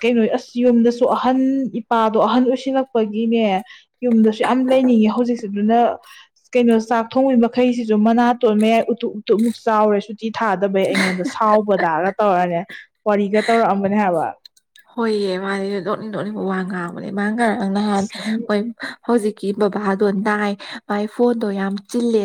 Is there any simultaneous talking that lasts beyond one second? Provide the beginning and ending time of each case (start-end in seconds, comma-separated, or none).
none